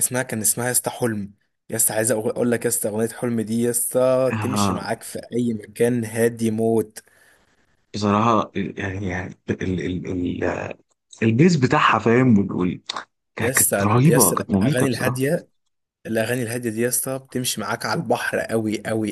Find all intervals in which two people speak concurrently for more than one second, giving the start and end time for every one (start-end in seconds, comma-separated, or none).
13.4-15.3